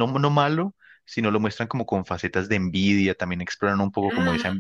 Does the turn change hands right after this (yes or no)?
no